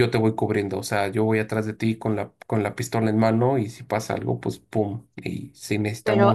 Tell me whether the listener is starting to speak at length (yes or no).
yes